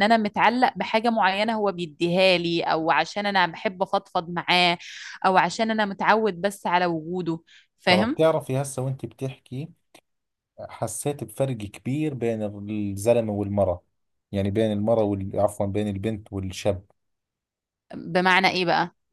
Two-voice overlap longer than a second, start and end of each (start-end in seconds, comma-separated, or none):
none